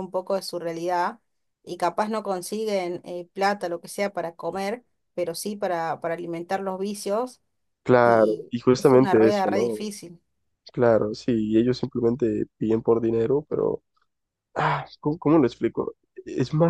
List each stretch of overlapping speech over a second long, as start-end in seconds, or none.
8.0-9.8